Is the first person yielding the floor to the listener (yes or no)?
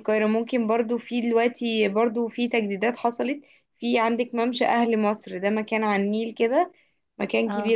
no